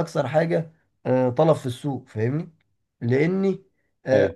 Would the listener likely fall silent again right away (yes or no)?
yes